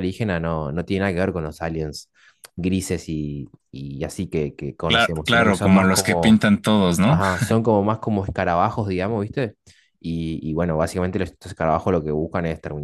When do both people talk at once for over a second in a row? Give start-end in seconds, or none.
4.9-6.4